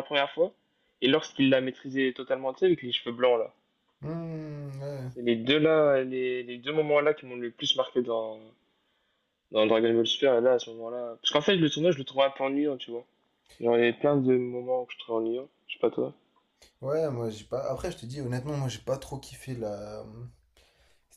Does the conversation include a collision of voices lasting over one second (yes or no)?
no